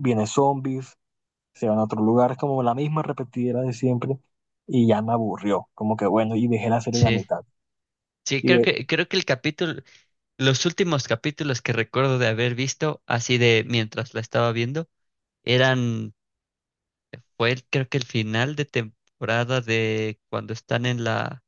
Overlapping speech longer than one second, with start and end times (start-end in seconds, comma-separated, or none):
none